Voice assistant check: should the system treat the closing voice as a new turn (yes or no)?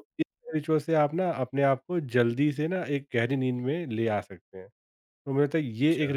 no